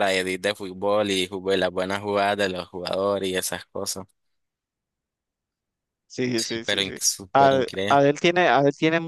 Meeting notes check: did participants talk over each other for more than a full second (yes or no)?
yes